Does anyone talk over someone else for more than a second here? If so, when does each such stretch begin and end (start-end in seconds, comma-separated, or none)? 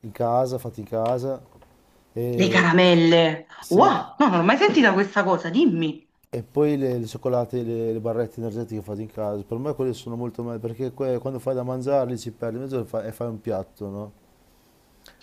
none